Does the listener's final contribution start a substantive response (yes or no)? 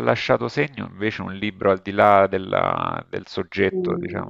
yes